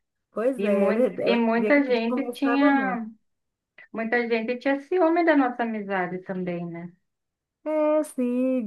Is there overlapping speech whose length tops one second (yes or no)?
yes